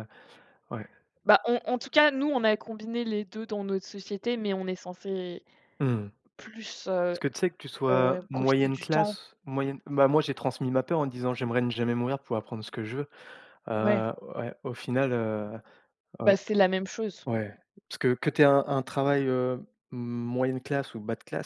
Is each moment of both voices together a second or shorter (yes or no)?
no